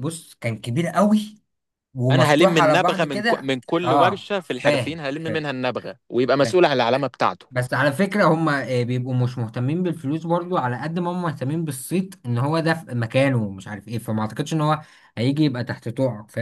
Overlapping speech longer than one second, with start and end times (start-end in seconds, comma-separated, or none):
2.1-5.5